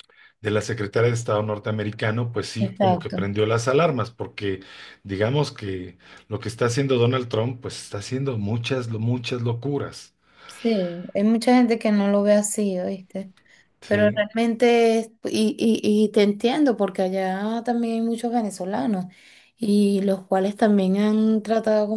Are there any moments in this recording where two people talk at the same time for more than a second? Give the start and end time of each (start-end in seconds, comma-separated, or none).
none